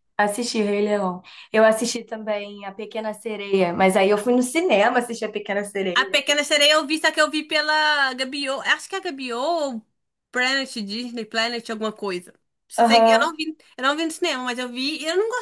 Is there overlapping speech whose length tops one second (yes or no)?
no